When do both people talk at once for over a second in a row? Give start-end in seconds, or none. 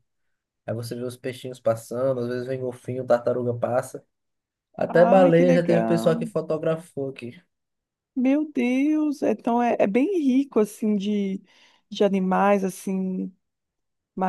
4.9-6.3